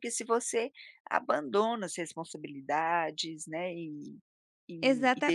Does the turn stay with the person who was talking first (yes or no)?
no